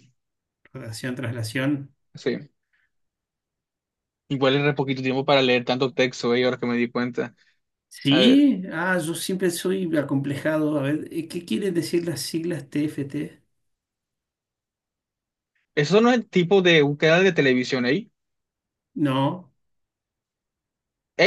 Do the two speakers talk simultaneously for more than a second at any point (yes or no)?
no